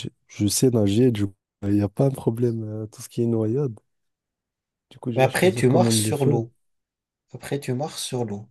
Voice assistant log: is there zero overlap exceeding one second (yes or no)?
no